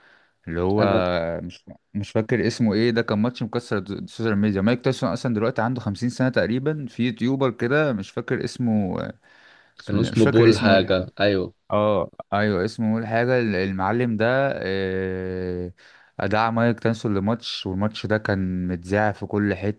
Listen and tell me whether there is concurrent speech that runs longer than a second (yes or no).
yes